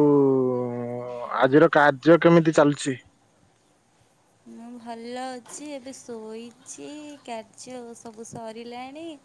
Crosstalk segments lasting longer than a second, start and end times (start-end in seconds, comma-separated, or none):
none